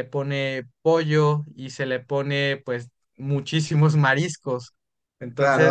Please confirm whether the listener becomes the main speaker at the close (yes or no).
yes